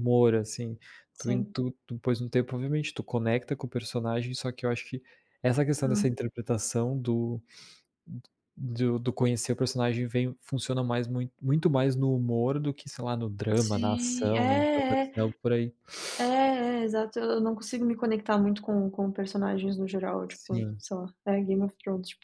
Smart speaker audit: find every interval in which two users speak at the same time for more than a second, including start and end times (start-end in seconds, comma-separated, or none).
13.5-15.2